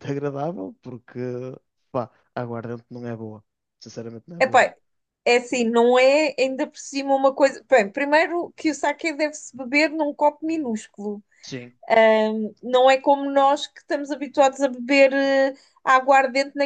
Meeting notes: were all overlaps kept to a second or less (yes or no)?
yes